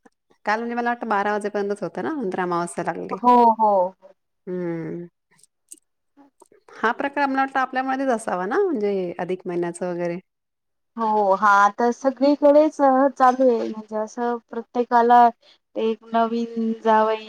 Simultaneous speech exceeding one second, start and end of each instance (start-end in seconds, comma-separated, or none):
none